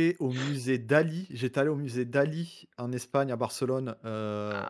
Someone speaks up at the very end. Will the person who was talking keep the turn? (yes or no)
yes